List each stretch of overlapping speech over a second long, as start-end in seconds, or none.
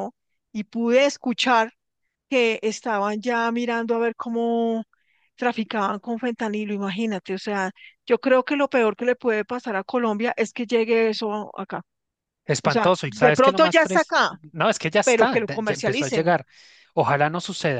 12.6-14.2, 15.0-16.4